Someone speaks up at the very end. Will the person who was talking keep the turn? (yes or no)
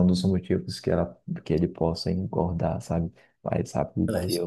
yes